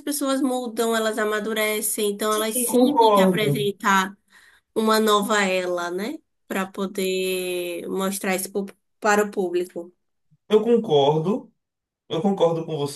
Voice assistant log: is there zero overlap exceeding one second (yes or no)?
no